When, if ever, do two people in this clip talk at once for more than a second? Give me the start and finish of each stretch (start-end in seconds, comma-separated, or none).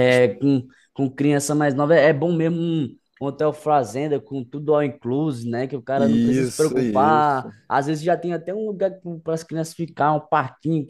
6.0-7.5